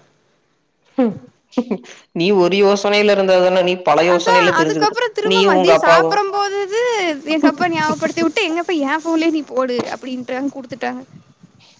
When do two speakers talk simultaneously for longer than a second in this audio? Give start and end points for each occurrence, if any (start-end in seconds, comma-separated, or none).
4.1-6.1